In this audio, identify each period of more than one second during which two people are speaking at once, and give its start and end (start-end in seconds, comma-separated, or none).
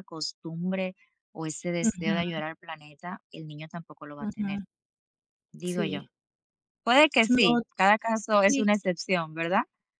none